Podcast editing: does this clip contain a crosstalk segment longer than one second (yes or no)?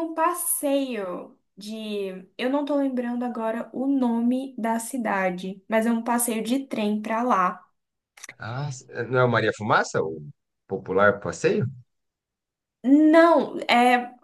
no